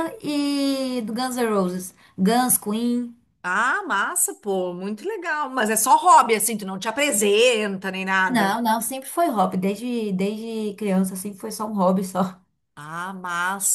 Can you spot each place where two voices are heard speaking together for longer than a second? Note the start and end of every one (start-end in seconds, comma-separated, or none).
none